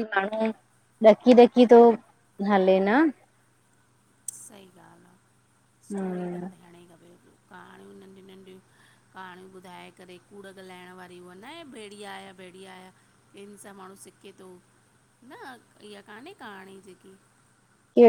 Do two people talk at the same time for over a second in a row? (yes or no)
no